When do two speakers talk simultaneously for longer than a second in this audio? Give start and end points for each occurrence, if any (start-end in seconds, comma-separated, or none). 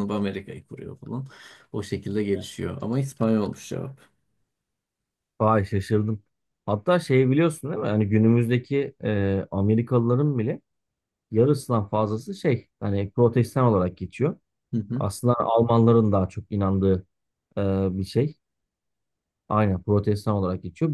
none